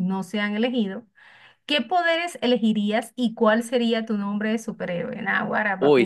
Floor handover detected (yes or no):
yes